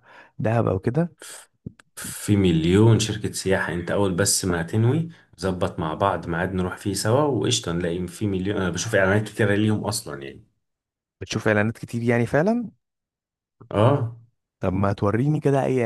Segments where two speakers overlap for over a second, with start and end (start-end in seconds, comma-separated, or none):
none